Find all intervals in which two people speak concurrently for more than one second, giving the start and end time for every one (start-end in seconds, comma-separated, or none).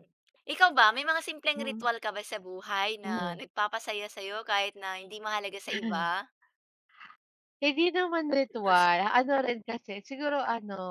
none